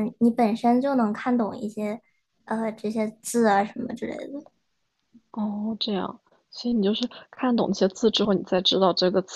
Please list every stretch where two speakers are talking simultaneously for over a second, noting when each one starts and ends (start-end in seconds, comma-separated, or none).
none